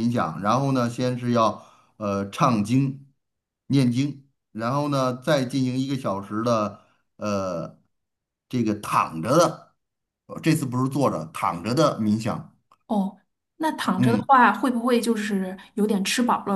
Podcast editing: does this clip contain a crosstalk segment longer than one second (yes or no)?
no